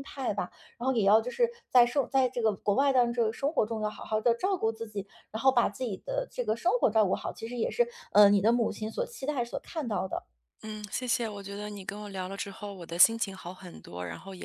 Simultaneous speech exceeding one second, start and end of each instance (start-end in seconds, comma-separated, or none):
none